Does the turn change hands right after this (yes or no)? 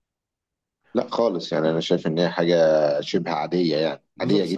yes